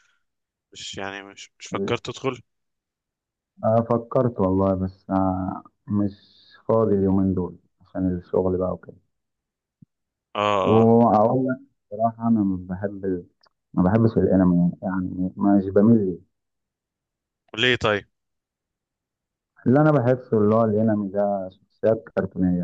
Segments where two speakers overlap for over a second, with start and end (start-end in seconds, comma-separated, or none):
none